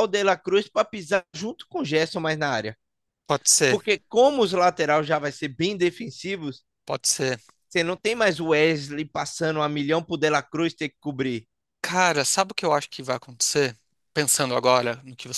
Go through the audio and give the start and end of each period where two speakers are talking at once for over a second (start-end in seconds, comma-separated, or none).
none